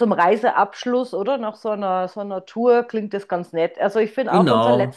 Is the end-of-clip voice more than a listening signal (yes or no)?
no